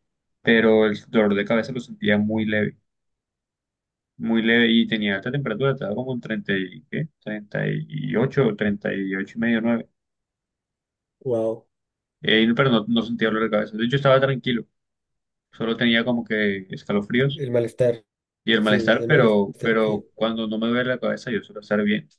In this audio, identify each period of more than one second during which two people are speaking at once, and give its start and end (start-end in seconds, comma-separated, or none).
18.6-20.1